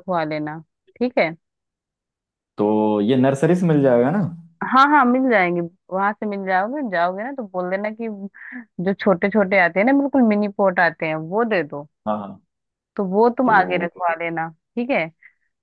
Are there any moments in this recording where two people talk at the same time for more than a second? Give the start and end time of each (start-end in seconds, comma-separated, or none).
none